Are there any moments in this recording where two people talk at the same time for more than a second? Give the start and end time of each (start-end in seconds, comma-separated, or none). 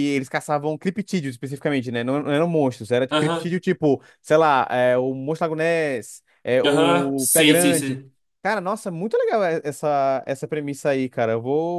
6.6-8.0